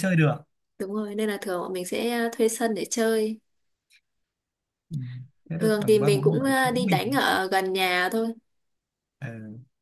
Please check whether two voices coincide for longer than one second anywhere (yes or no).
yes